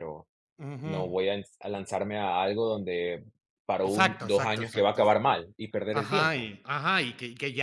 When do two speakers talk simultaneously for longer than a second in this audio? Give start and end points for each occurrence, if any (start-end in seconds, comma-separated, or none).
3.8-5.0